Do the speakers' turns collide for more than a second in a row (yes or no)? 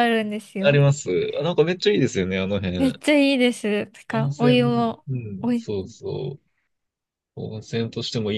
yes